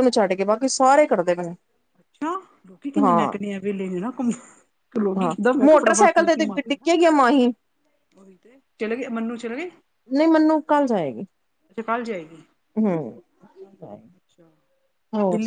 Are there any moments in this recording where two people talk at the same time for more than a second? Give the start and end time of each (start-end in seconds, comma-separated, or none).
5.2-6.9